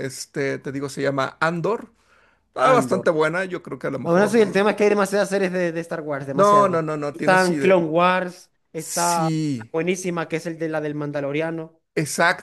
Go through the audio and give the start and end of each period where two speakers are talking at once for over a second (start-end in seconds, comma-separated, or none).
6.3-7.8